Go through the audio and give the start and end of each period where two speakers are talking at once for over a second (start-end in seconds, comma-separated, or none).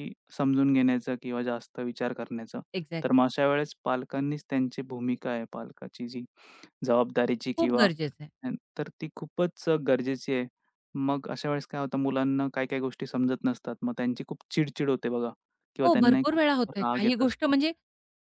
15.8-17.5